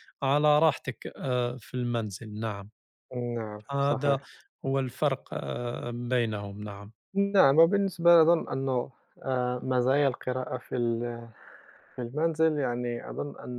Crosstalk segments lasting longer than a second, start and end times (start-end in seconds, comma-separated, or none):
none